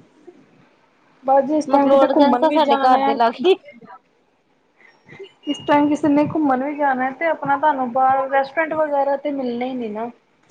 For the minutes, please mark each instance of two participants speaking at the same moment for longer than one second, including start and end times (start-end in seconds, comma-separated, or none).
1.7-3.1